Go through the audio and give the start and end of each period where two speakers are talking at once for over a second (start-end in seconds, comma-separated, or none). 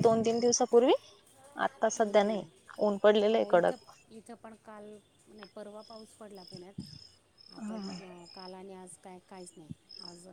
none